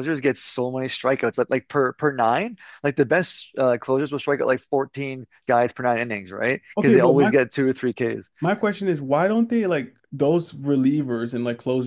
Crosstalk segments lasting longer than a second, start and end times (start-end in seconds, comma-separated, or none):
none